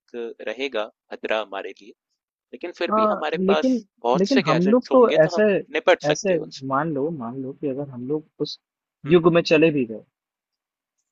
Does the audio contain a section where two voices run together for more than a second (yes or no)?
yes